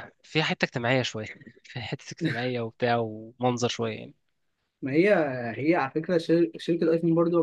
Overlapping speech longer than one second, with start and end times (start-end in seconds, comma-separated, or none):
none